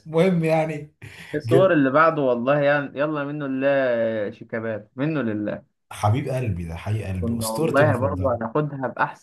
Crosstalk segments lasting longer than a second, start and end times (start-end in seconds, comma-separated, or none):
7.2-8.4